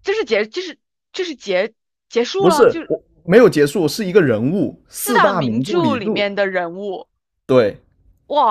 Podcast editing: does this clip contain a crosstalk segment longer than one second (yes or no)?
yes